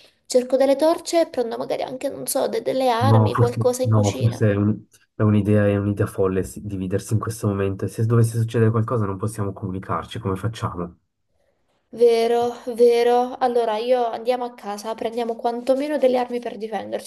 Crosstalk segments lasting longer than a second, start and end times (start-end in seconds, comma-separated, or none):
3.0-4.4